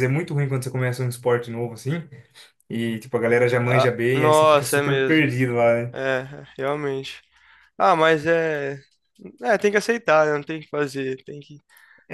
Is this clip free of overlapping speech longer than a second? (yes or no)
no